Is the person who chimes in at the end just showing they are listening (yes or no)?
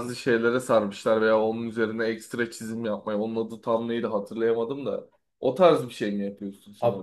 no